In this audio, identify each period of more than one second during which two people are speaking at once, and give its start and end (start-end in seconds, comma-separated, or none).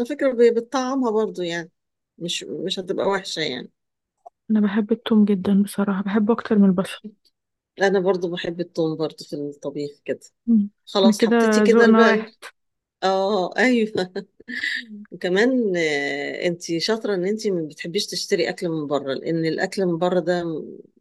11.1-12.3